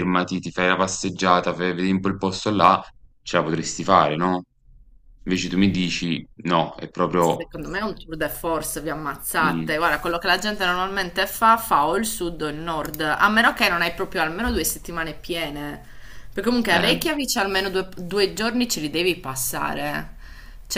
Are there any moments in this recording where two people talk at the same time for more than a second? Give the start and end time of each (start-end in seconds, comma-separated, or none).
none